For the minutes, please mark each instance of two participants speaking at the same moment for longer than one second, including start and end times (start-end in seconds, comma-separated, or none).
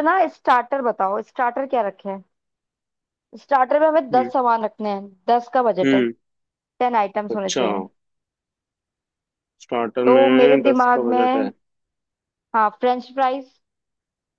10.1-11.5